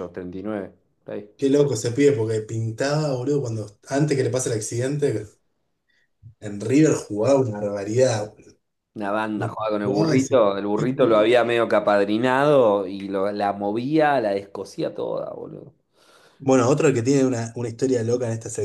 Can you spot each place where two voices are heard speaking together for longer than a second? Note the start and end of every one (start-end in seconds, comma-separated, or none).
9.3-11.3